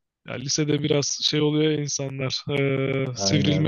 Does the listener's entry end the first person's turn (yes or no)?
no